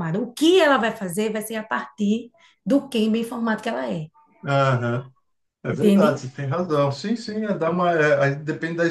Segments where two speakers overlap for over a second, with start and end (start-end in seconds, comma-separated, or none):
none